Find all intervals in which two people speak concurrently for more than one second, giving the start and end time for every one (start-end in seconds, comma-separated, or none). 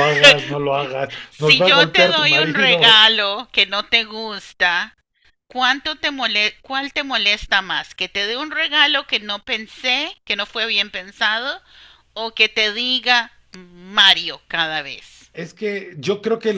1.3-3.0